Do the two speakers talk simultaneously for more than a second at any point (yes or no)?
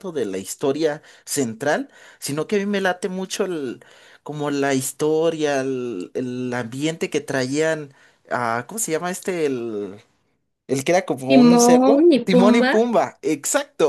yes